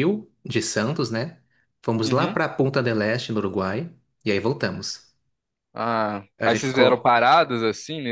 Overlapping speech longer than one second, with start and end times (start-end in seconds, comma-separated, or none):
none